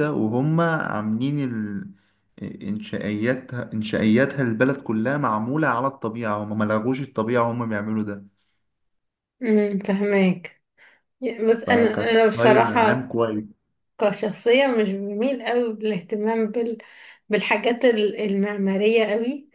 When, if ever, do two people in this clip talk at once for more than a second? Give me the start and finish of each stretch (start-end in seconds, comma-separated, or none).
11.7-13.1